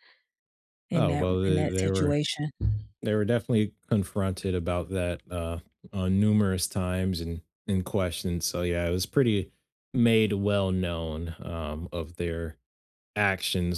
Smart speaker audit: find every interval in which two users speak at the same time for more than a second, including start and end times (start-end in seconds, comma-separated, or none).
0.9-2.2